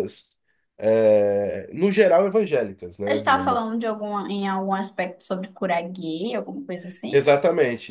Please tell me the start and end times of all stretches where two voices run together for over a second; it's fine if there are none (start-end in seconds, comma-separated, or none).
none